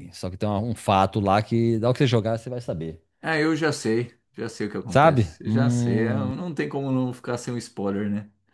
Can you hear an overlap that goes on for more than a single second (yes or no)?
yes